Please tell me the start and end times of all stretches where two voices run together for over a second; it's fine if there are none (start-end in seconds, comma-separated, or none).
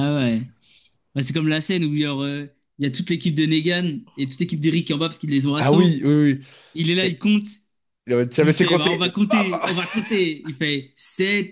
8.4-9.7